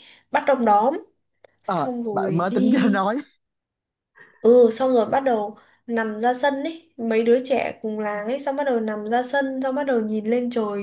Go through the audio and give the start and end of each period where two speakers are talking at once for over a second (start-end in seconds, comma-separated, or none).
1.6-3.1